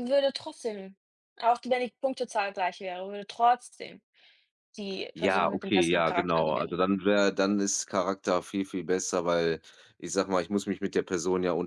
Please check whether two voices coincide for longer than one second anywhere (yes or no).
yes